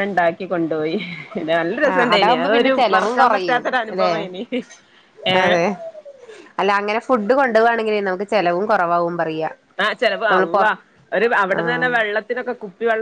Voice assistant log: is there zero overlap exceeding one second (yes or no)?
no